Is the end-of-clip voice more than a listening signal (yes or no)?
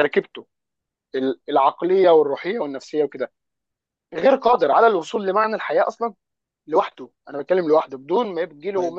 yes